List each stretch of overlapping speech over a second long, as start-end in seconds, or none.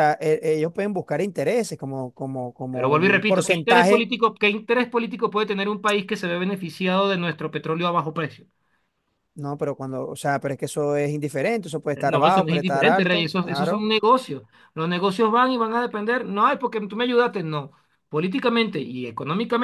2.7-4.1, 12.1-13.9